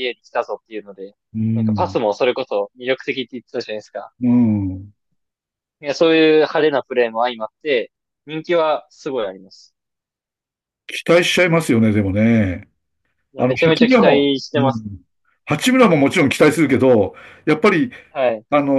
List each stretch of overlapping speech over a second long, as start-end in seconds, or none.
13.4-14.9